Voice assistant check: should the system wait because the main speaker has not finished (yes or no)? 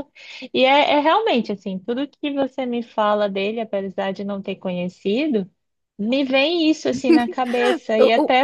yes